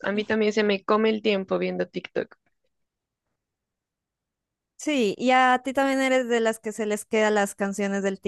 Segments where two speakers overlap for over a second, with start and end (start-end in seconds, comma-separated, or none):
none